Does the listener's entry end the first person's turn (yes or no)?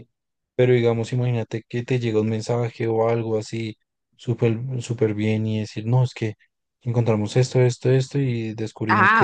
yes